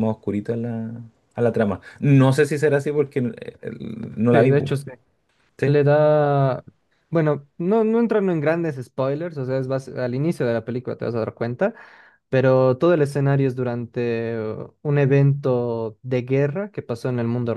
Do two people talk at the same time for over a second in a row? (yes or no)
no